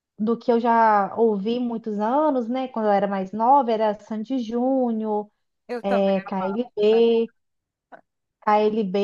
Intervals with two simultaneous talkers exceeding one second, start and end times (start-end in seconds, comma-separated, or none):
5.8-7.2